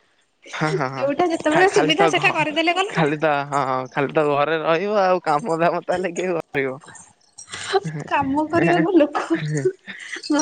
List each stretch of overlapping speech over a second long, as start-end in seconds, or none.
1.0-3.4